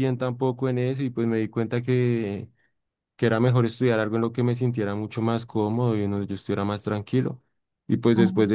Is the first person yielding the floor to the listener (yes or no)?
no